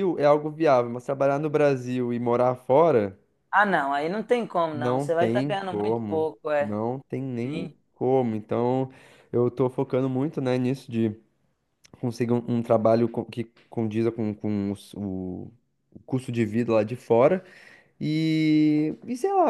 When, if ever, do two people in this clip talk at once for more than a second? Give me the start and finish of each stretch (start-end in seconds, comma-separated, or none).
4.7-6.8